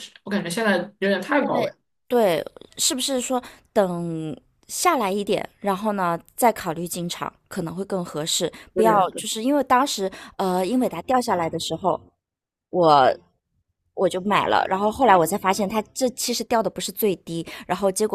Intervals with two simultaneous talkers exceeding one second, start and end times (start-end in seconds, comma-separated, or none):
none